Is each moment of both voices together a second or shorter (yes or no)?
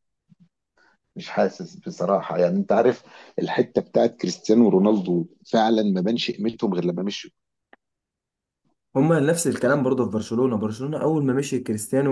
yes